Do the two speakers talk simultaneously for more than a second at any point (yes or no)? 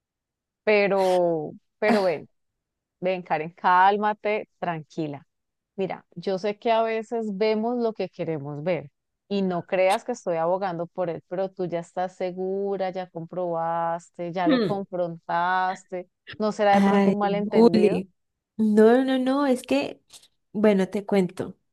yes